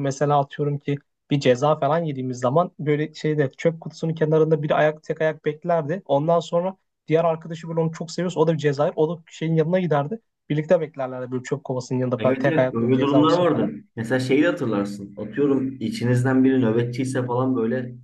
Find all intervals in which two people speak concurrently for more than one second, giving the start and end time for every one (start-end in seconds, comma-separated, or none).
12.2-13.7